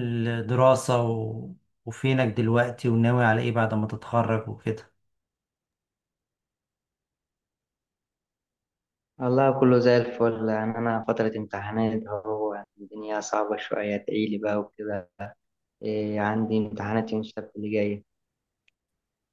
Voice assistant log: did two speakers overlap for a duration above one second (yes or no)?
no